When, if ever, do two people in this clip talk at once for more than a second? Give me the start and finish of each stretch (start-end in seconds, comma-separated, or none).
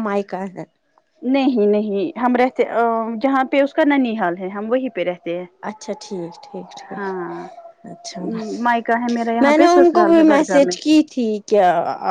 9.4-10.7